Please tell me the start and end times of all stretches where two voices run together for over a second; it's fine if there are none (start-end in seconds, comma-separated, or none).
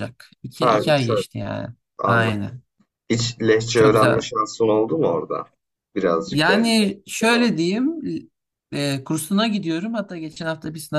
none